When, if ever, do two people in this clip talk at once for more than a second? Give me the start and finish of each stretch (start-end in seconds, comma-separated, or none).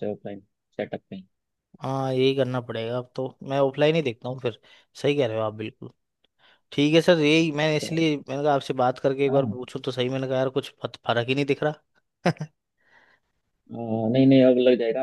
none